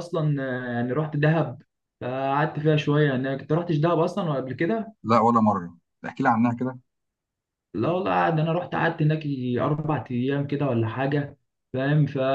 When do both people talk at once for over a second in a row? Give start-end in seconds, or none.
none